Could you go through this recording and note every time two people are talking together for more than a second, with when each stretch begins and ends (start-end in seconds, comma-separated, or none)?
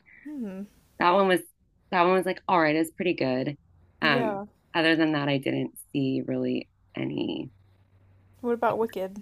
none